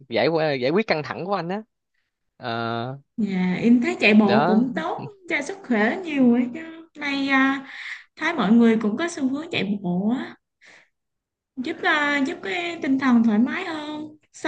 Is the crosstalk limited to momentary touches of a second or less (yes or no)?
yes